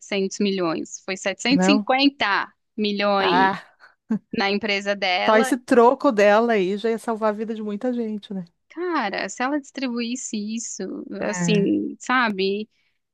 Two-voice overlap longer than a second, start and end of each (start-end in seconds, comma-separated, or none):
none